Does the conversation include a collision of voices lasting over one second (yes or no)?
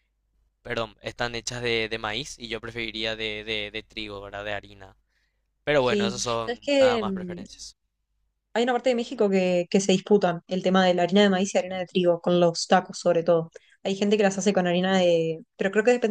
yes